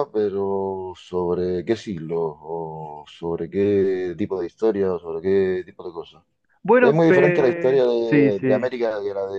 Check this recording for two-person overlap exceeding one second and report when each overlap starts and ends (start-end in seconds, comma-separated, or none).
6.8-8.7